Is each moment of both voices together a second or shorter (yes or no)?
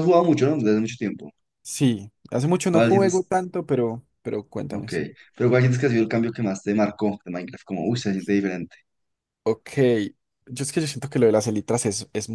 yes